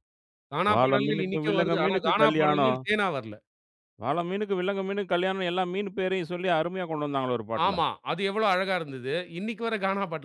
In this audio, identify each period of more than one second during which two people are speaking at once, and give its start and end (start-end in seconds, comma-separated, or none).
0.7-2.8